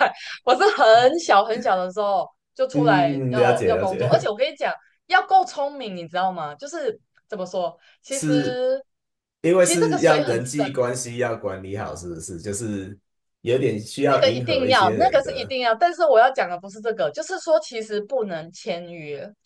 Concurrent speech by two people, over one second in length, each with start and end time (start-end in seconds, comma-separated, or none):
2.7-4.3, 9.6-10.8, 14.1-15.6